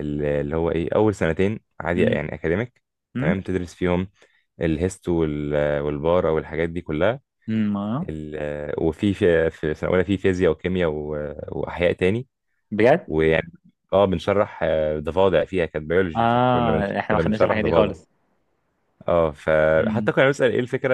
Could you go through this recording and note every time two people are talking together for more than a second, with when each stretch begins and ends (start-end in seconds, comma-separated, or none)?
16.2-17.9